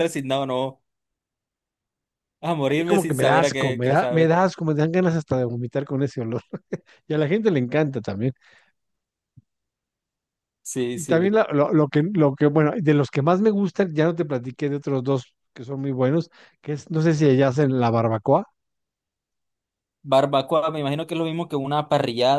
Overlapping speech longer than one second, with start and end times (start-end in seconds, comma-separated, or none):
2.7-4.3